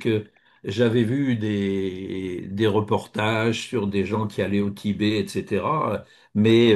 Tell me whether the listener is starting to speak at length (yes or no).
no